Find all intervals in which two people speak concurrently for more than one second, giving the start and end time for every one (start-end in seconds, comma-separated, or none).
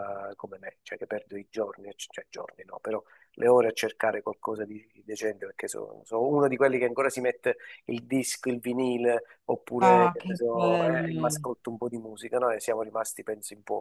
9.8-11.4